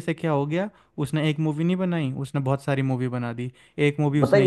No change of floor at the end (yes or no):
no